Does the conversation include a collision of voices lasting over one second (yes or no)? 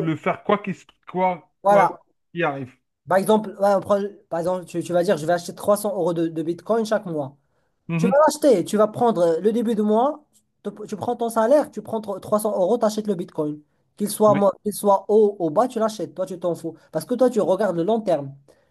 no